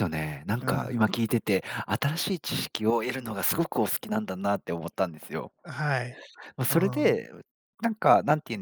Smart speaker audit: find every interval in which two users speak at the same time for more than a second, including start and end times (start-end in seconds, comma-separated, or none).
none